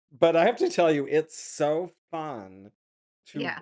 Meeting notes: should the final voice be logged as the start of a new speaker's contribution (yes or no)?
no